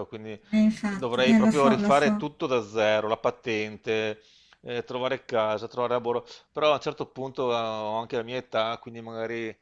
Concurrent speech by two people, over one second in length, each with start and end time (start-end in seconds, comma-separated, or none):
0.9-2.3